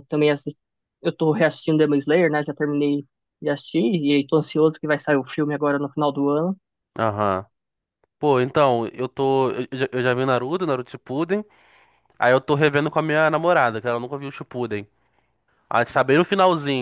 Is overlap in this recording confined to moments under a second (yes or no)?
yes